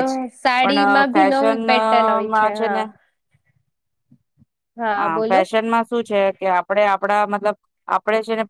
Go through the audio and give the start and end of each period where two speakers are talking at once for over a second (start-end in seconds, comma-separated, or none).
0.6-2.5